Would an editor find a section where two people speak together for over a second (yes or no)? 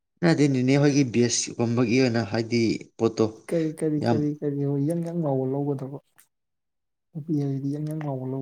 no